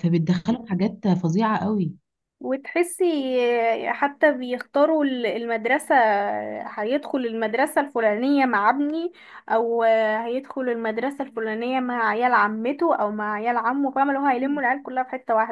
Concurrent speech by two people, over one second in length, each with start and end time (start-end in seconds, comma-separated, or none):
none